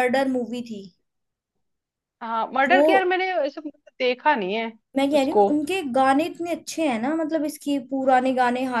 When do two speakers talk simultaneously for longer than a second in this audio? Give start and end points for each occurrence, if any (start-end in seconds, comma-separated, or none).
none